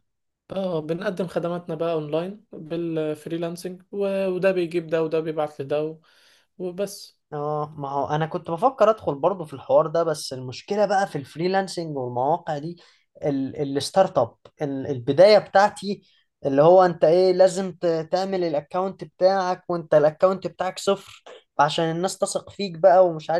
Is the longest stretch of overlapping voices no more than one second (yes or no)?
yes